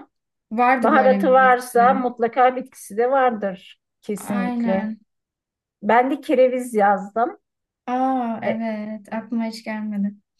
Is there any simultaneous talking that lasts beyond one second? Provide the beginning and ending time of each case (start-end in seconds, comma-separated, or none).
0.8-2.1